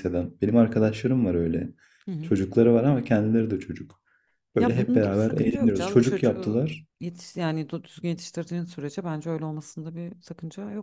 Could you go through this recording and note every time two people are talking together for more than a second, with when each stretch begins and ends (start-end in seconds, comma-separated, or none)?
4.6-6.6